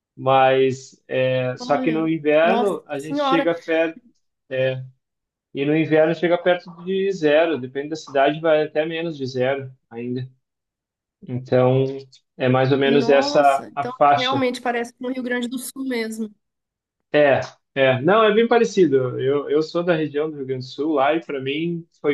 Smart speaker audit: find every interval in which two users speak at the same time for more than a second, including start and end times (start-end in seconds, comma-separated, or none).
1.6-3.5, 12.8-14.4